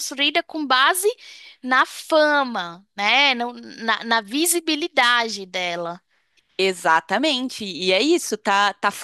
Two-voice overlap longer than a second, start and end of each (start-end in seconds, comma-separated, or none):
none